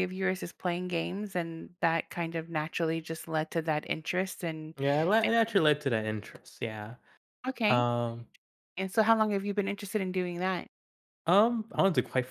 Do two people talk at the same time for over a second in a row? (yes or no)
no